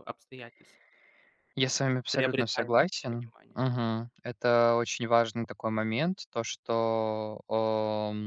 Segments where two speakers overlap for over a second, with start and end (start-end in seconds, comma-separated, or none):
1.6-3.6